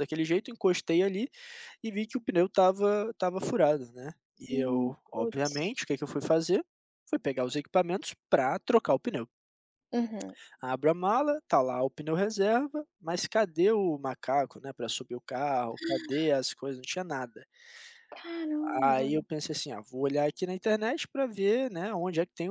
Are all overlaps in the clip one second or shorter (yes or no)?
no